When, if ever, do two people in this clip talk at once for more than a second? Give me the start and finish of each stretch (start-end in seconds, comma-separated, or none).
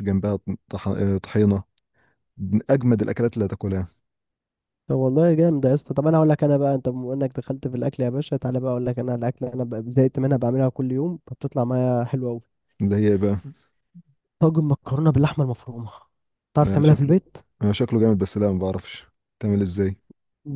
none